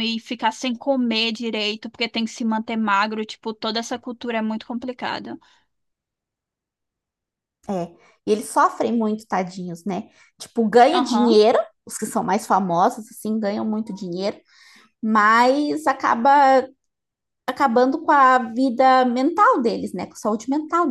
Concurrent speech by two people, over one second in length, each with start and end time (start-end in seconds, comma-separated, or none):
none